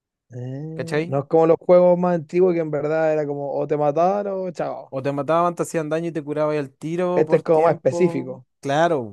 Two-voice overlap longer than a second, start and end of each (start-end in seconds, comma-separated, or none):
7.2-8.4